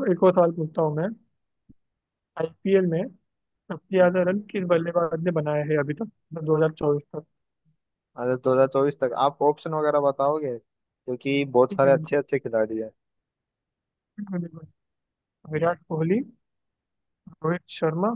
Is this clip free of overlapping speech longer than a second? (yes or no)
yes